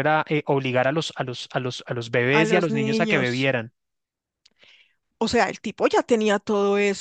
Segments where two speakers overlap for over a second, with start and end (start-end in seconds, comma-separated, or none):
2.3-3.5